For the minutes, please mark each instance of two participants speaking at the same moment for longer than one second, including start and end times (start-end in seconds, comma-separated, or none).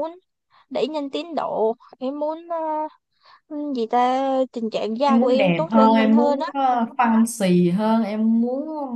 5.1-6.5